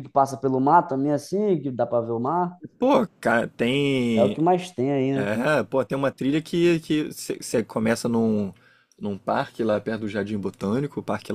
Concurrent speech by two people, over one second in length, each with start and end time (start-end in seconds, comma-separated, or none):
none